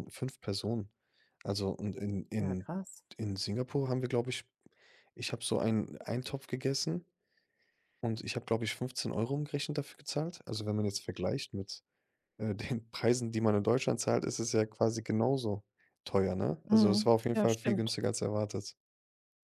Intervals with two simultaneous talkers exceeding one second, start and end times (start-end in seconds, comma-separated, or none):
16.7-17.9